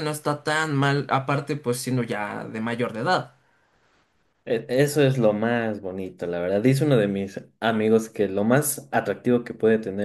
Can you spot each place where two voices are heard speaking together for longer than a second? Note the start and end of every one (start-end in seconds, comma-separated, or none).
none